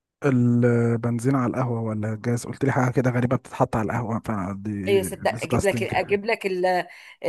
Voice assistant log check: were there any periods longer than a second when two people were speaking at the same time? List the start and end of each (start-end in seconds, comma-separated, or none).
4.9-6.2